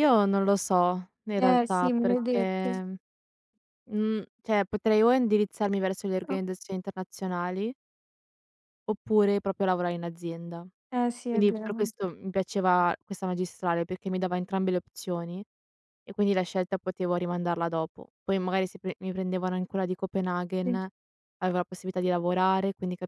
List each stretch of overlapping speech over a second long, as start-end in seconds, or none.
1.4-2.7